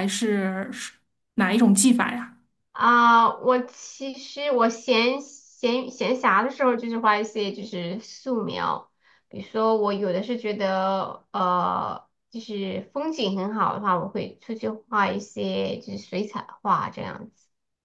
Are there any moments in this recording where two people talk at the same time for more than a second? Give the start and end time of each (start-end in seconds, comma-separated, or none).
none